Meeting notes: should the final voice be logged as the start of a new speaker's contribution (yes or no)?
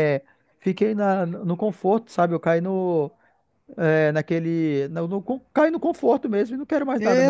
yes